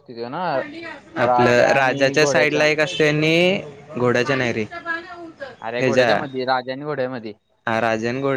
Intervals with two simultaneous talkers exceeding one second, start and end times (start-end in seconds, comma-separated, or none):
1.3-2.6